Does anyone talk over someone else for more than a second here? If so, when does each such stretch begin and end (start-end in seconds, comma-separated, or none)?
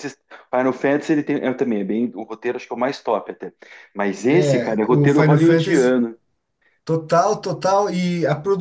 4.4-6.0